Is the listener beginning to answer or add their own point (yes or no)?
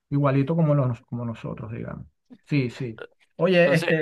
no